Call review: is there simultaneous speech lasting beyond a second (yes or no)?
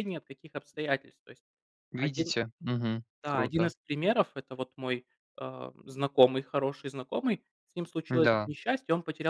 no